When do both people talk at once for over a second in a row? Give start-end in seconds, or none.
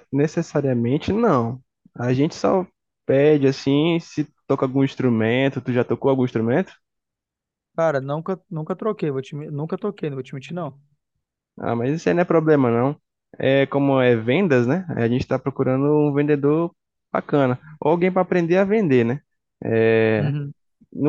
none